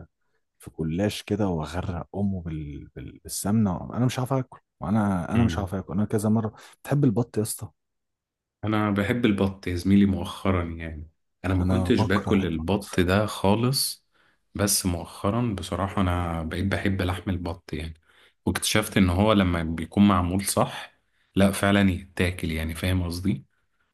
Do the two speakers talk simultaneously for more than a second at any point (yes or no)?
yes